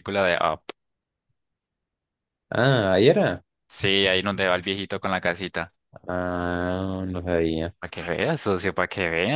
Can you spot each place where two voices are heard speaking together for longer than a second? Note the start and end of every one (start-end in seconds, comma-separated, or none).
none